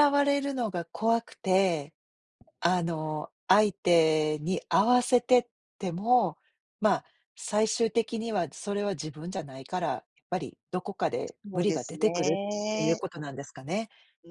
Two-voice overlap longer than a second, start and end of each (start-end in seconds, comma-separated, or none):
11.5-13.0